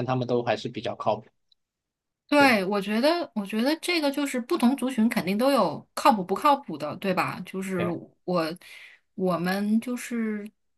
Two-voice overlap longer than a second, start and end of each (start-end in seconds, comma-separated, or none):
none